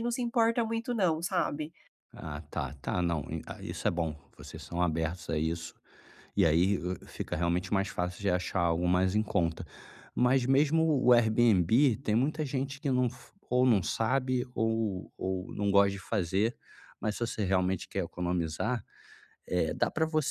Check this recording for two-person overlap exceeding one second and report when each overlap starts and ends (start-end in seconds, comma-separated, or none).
none